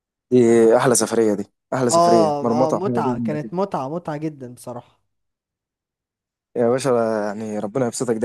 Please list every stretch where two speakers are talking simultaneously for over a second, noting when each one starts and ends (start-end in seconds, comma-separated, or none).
1.9-3.5